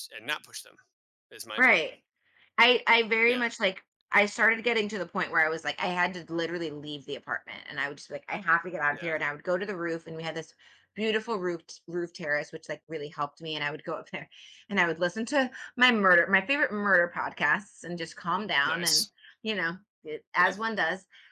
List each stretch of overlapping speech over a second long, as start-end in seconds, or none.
none